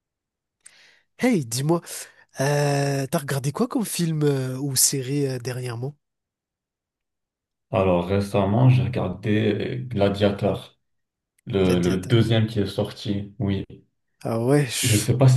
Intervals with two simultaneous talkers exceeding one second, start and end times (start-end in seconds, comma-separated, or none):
none